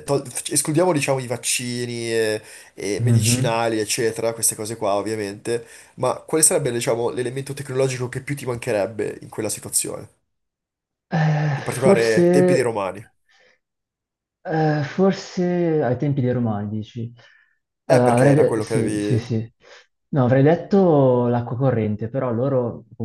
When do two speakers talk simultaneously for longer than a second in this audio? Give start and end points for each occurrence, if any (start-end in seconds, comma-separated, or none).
11.5-12.7, 17.9-19.4